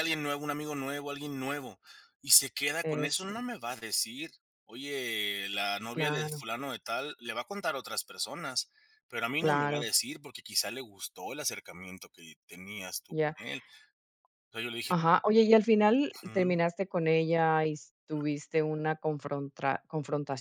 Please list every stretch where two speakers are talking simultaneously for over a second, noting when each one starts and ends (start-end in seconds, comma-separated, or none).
none